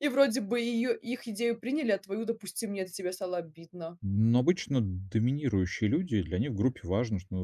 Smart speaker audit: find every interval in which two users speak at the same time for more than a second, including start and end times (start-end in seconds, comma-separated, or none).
none